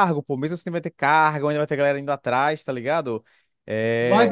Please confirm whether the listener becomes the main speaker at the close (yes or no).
yes